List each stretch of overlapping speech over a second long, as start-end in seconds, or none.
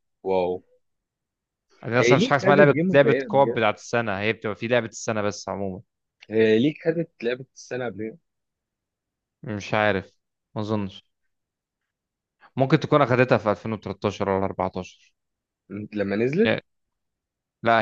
2.0-3.6